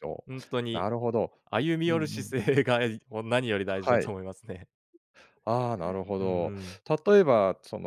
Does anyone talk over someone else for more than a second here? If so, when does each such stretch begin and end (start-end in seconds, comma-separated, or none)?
none